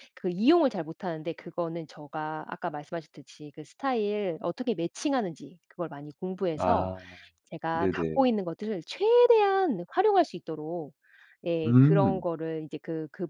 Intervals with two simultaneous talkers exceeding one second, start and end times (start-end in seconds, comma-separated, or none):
none